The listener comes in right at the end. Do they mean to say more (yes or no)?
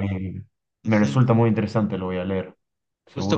yes